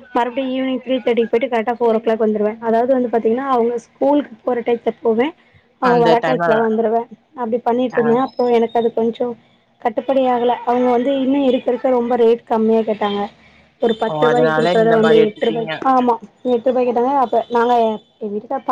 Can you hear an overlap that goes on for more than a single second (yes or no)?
yes